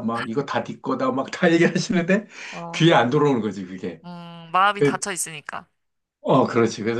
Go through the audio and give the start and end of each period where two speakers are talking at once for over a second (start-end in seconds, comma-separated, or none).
none